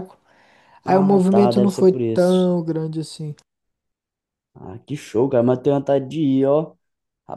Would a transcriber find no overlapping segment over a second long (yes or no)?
no